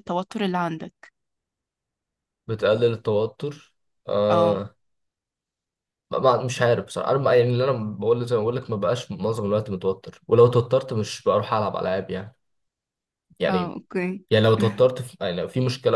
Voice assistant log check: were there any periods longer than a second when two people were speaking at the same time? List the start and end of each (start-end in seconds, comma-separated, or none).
none